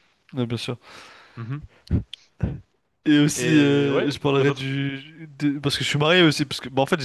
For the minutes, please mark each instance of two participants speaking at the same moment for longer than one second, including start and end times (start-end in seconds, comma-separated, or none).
3.4-4.7